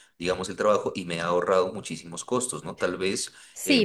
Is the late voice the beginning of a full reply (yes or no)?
yes